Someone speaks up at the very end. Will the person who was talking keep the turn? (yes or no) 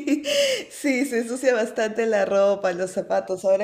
yes